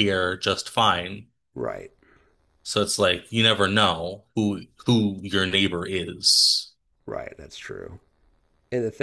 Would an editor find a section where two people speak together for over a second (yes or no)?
no